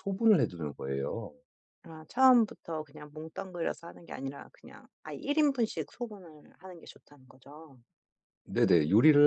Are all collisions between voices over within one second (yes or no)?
yes